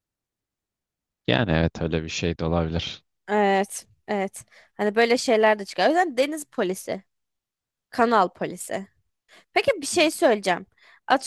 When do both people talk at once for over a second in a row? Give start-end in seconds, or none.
none